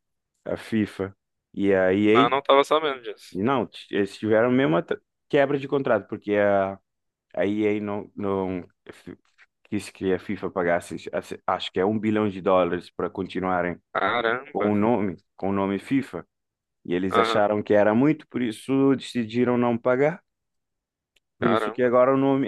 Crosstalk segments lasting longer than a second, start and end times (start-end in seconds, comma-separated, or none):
none